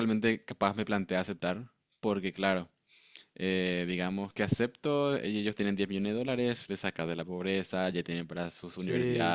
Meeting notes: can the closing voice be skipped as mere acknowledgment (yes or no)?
yes